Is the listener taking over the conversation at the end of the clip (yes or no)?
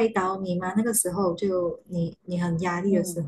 yes